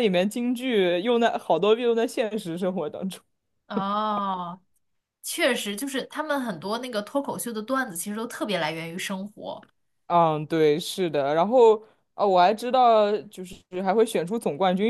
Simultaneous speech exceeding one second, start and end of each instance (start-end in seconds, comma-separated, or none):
none